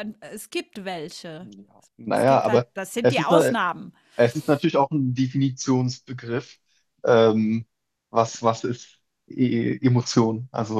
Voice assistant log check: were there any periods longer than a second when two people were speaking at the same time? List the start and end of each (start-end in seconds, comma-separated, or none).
2.1-3.5